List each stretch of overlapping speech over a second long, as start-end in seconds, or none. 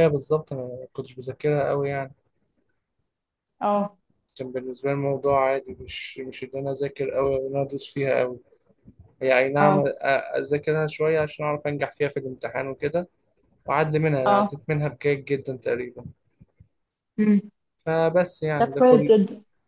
none